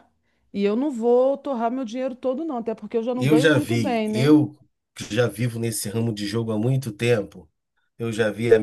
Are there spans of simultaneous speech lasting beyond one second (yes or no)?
yes